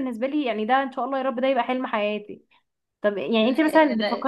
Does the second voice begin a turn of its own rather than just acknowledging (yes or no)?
no